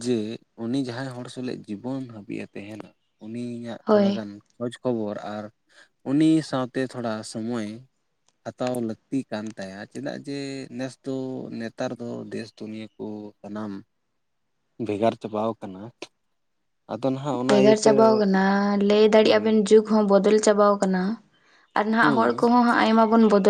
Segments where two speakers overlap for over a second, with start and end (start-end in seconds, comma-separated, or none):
none